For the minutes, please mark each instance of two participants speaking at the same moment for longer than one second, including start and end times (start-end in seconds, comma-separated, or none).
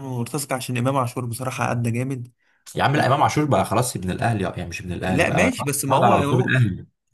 5.0-6.5